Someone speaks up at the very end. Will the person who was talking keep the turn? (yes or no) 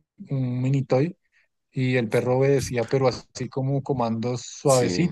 yes